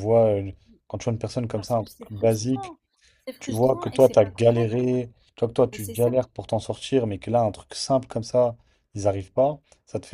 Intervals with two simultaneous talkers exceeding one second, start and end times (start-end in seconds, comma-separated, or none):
1.5-2.7, 3.4-4.7